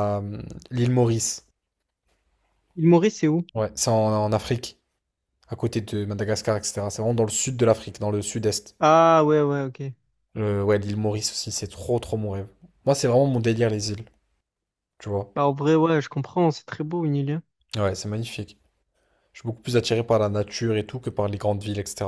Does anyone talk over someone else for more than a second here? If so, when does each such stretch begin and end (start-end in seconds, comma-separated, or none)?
none